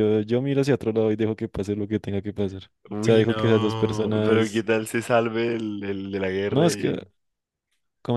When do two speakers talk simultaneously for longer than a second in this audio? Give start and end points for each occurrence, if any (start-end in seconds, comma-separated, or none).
3.0-4.7